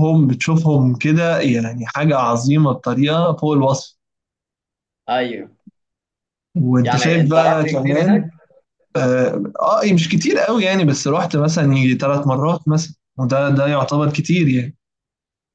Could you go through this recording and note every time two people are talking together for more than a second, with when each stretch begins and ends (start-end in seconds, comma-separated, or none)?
6.8-8.3